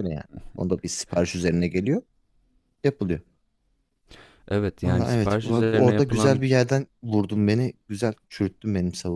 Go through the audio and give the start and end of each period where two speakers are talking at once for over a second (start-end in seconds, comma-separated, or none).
4.9-6.4